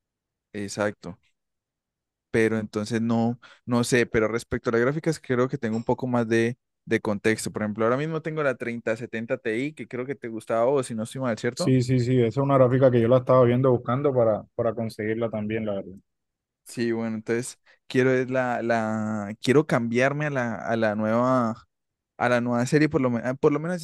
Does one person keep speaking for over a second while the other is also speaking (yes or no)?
no